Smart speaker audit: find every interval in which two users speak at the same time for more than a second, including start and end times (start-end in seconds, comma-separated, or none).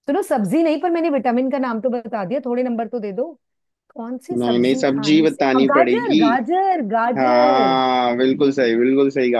4.4-6.2